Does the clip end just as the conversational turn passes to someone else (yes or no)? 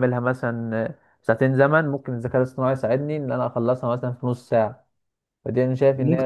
no